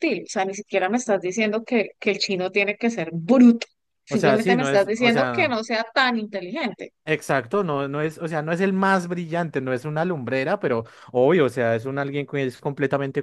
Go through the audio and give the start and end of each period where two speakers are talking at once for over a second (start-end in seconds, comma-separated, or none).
4.1-5.5